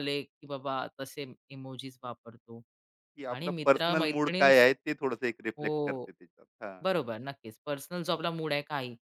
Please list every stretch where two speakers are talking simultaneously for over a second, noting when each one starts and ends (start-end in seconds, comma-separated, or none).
3.3-4.6